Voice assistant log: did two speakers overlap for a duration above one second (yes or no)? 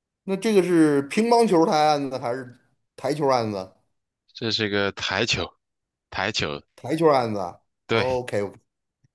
no